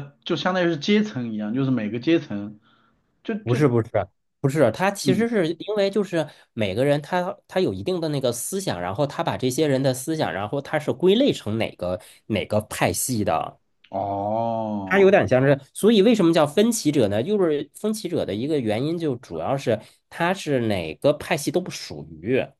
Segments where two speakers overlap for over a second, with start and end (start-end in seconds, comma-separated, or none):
none